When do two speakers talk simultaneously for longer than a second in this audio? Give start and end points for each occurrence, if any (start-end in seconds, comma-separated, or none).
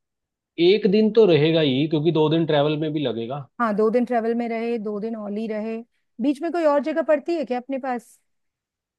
none